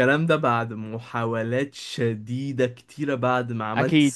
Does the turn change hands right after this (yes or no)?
no